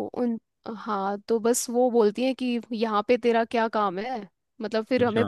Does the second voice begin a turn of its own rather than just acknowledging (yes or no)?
no